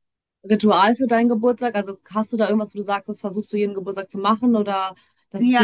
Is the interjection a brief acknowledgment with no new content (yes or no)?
no